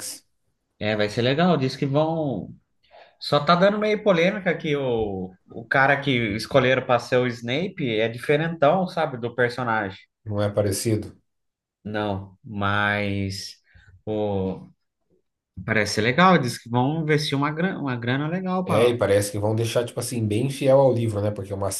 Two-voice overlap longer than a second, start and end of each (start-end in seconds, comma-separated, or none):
none